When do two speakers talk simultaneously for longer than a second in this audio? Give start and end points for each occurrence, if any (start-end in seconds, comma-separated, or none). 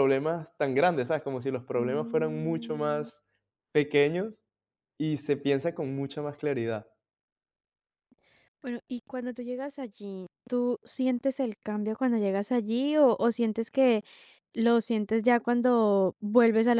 1.8-3.1